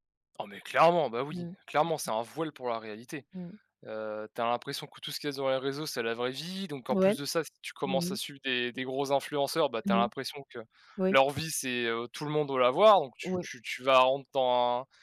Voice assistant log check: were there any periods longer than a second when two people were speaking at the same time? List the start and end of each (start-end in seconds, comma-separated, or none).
none